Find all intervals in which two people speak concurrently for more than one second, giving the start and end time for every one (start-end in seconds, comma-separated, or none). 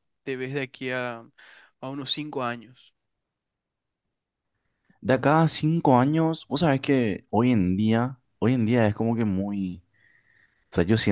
none